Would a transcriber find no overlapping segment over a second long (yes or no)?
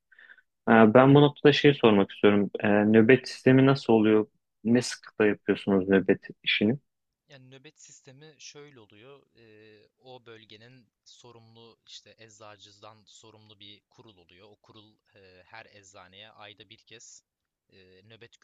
yes